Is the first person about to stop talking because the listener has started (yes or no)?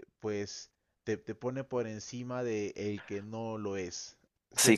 yes